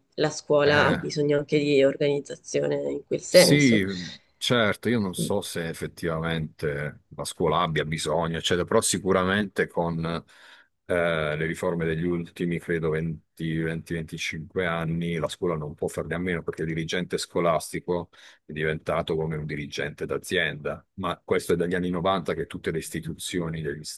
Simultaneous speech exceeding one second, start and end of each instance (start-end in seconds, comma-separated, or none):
none